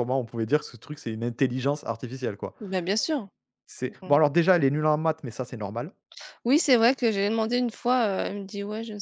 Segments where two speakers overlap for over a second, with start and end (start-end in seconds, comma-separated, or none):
none